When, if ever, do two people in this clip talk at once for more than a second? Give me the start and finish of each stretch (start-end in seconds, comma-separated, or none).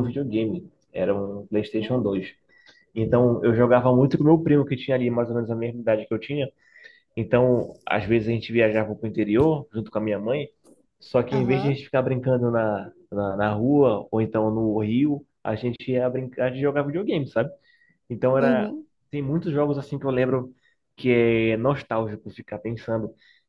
none